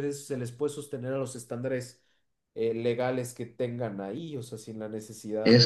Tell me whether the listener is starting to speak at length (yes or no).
yes